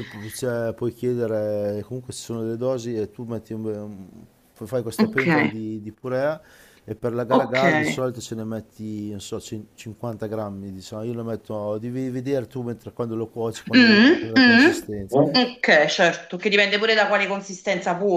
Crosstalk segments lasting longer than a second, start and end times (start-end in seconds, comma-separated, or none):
13.7-15.2